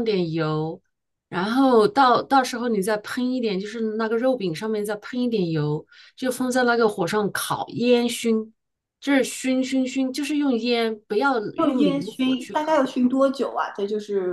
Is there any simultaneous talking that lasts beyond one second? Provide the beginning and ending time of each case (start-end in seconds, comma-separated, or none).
11.6-12.8